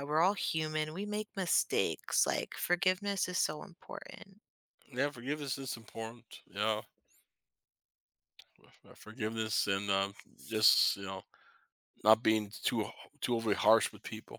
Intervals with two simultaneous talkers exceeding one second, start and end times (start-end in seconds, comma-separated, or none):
none